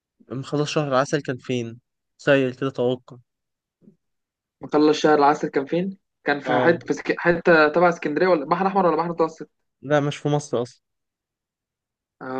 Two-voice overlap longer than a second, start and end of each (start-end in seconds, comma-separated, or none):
none